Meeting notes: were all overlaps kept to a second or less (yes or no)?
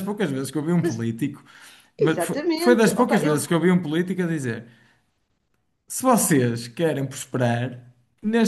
no